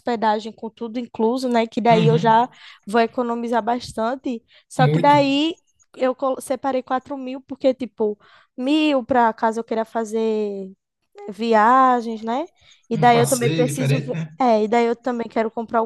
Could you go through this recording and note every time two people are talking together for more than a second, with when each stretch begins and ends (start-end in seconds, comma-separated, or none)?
13.0-14.4